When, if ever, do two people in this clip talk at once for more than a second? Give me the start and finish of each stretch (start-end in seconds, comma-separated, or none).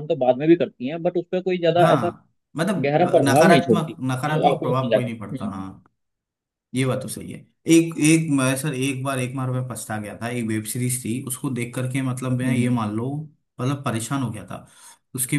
2.9-5.6